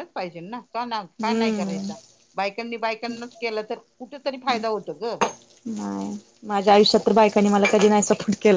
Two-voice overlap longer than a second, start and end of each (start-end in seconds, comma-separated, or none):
none